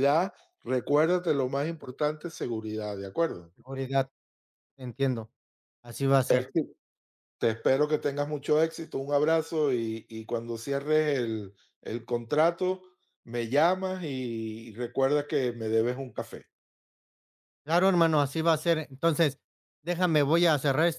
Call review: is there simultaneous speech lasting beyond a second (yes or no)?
no